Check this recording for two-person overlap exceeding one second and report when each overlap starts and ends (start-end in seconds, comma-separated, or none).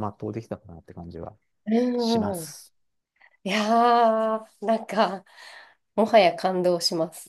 none